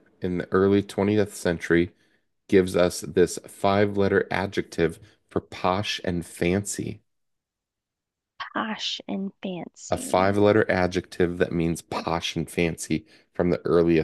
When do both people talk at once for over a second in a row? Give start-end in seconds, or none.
none